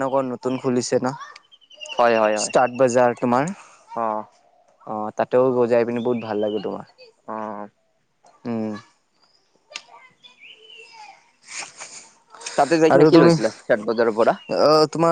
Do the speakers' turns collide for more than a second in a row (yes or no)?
no